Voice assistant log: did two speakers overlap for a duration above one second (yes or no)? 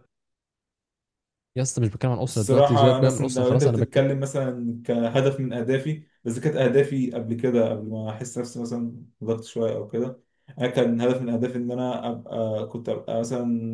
yes